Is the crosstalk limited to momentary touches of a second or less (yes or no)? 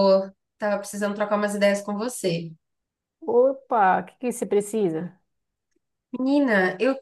yes